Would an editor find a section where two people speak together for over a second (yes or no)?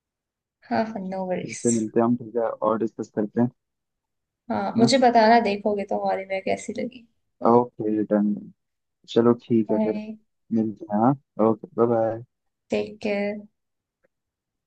no